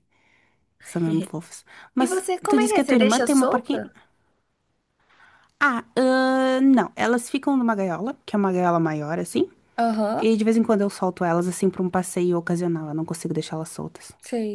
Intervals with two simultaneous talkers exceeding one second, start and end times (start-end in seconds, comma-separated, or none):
2.0-3.8